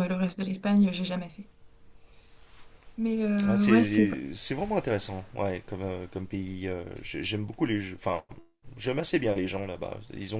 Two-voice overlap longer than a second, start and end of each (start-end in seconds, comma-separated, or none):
none